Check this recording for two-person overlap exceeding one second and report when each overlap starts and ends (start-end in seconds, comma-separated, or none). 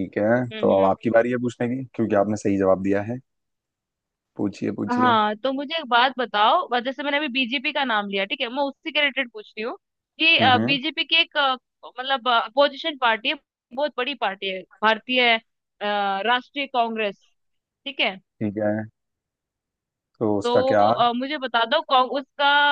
none